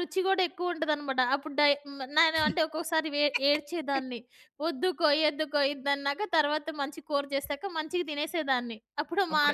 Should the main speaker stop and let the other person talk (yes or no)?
no